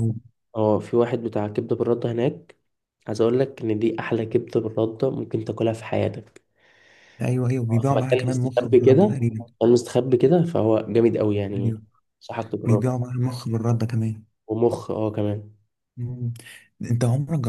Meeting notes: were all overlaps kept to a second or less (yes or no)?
no